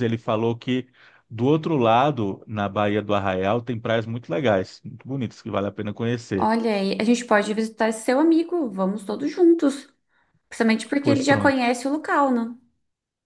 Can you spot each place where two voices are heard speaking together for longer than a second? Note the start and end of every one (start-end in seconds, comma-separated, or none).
none